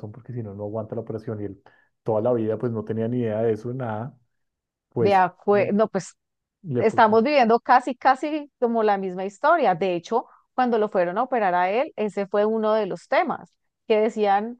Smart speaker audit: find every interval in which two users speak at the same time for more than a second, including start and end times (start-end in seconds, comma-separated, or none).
none